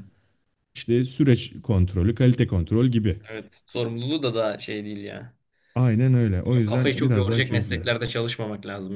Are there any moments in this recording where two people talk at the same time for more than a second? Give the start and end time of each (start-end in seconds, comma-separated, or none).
6.5-7.8